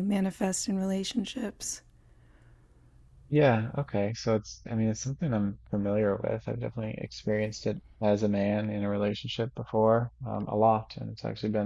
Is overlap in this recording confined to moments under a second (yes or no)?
yes